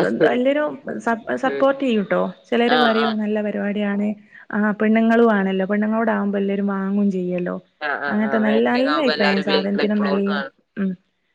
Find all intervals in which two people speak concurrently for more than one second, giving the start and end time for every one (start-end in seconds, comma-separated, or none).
8.1-10.3